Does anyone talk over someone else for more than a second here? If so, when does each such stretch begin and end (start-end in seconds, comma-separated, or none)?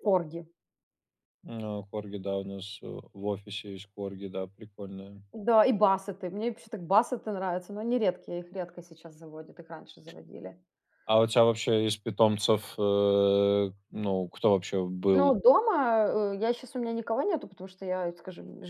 none